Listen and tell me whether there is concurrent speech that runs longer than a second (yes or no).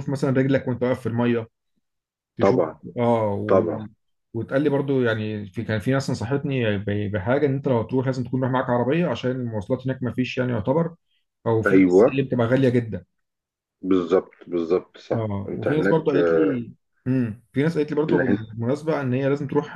yes